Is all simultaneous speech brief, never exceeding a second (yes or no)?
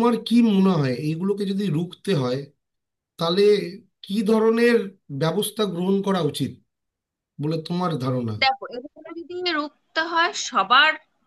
yes